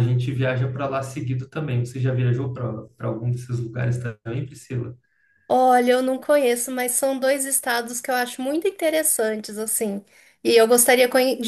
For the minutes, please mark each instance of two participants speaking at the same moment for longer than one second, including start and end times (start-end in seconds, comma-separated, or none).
none